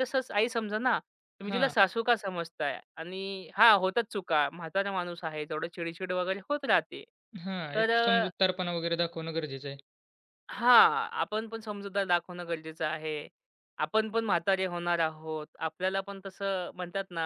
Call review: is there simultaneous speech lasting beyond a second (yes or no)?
no